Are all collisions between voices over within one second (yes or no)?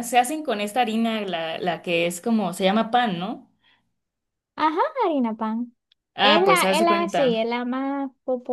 no